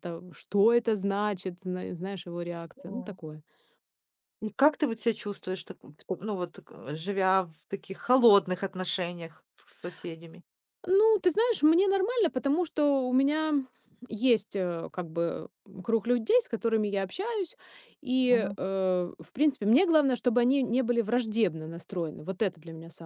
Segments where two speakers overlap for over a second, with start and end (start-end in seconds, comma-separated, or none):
none